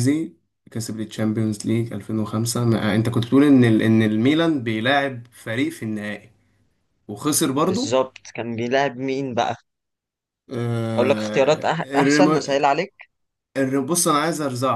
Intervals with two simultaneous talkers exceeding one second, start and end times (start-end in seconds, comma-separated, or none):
11.0-12.4